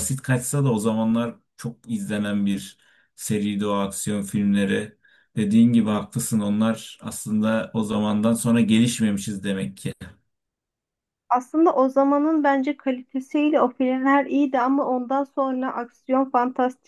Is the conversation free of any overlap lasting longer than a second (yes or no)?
yes